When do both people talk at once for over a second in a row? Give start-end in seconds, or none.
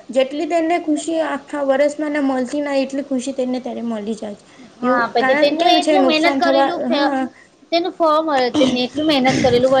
4.9-7.0